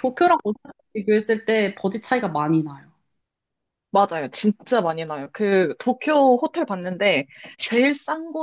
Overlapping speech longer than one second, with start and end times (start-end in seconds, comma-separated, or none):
none